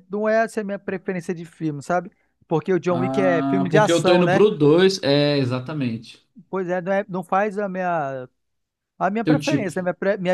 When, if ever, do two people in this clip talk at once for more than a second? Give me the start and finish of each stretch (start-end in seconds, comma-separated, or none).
2.9-4.4